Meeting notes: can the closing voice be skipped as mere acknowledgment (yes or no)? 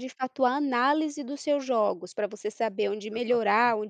yes